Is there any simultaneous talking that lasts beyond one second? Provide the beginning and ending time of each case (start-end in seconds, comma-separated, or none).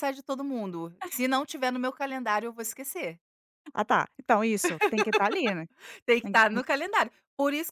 none